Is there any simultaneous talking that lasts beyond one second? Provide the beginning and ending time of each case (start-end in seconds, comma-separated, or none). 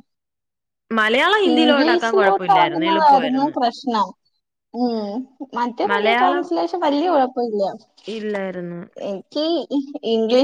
1.5-3.5